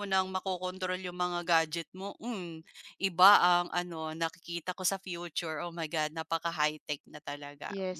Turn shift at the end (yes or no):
yes